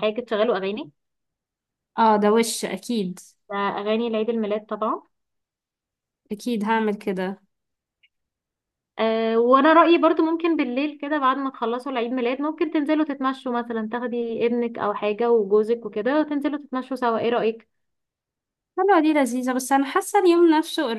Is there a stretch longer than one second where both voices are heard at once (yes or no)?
no